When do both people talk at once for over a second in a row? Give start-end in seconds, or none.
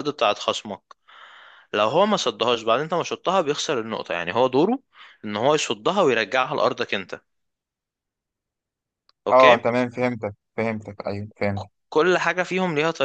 none